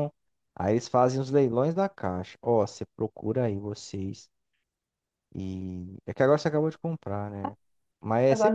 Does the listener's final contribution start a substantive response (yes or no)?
yes